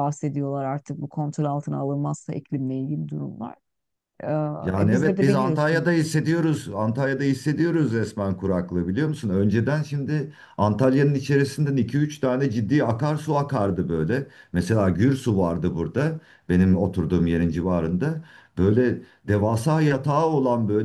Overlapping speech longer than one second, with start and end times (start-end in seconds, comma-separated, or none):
4.6-5.8